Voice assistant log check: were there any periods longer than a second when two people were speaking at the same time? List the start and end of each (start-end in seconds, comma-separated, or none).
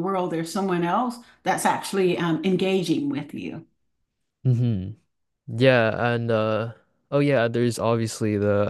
none